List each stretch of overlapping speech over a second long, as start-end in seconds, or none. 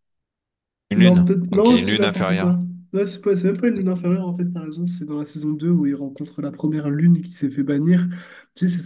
0.9-2.5